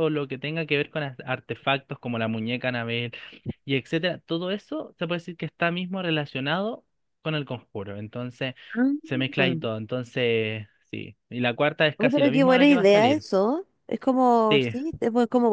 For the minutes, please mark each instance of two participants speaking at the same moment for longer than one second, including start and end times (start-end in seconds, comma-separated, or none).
11.9-13.2